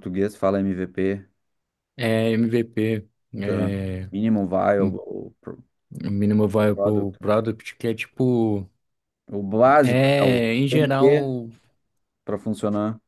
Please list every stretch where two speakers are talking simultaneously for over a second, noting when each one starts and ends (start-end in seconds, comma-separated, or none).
9.8-11.4